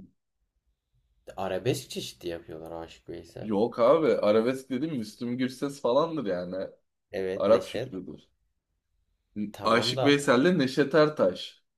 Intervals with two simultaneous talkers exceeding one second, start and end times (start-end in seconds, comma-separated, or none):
none